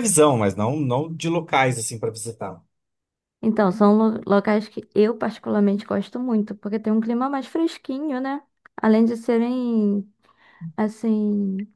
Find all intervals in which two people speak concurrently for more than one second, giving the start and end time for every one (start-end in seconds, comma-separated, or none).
none